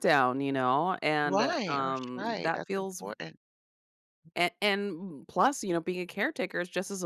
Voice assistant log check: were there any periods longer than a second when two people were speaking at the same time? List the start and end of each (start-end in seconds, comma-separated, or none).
1.2-3.0